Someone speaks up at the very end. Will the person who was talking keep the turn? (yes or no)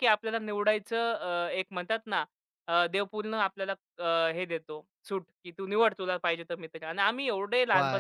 no